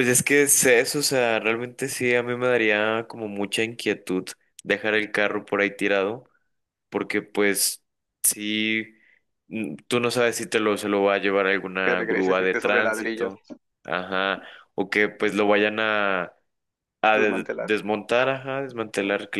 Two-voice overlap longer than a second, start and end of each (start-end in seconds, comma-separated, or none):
11.8-13.3